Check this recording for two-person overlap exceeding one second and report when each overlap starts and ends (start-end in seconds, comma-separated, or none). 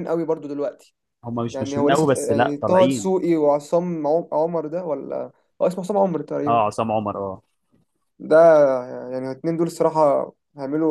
1.5-3.1